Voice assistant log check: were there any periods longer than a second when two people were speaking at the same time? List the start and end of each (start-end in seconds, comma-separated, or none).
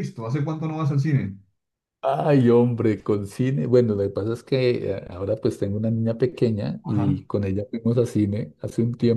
none